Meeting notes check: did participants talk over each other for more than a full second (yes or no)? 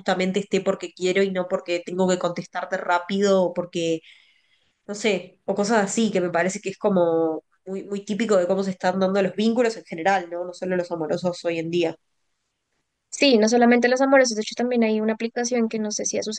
no